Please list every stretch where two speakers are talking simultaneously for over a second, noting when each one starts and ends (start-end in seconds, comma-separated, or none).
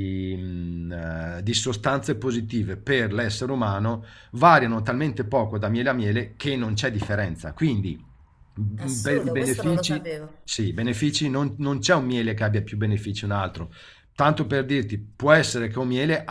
8.8-10.3